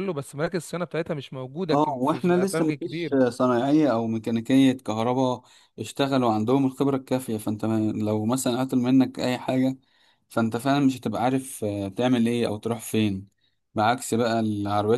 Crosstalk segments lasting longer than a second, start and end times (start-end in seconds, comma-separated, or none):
1.7-3.2